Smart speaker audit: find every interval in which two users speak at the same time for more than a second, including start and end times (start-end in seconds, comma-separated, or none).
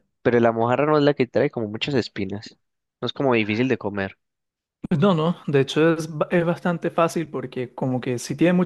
none